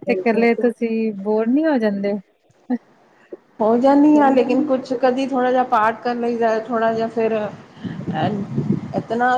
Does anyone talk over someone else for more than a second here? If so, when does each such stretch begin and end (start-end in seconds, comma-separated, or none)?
none